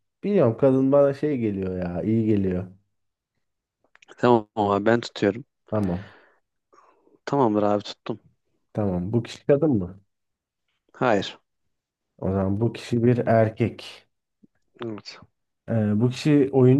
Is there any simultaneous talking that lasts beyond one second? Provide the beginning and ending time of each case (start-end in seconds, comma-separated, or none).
none